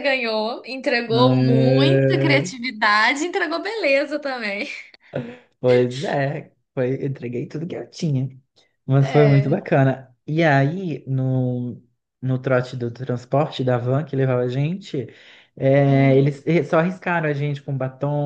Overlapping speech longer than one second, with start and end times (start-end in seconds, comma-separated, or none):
1.1-2.4